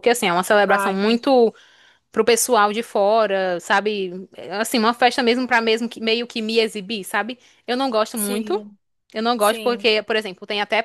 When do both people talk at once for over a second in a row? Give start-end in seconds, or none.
none